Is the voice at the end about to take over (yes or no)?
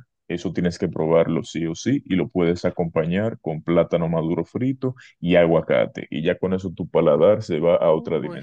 yes